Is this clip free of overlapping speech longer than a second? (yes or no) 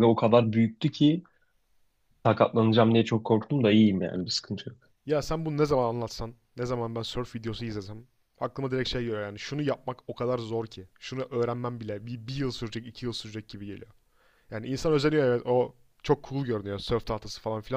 yes